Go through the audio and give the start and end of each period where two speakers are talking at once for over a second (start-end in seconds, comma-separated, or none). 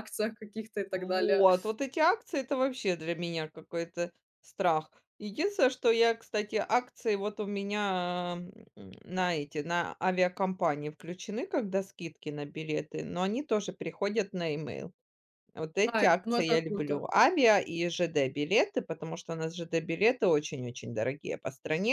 15.8-17.1